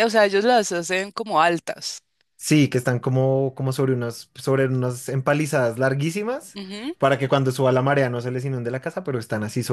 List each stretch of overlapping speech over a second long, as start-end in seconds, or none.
none